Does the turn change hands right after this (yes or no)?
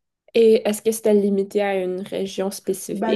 yes